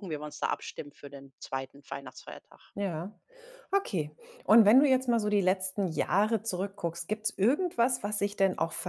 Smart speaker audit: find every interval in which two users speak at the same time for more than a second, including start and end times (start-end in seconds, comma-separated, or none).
none